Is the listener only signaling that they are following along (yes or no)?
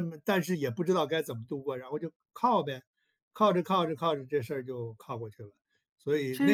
no